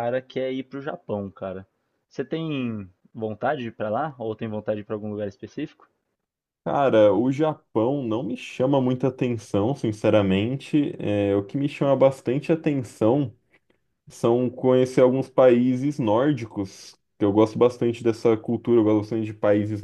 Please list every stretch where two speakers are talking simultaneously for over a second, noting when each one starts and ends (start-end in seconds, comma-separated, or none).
none